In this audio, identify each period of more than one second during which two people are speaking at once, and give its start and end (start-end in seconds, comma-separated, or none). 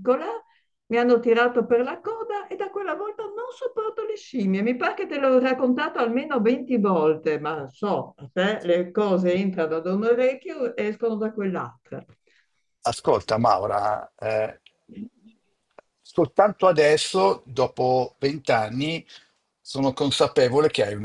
none